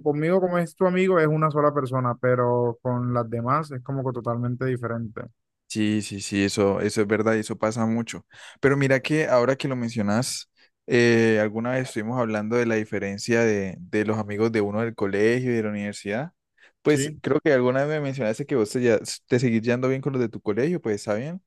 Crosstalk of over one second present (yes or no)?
no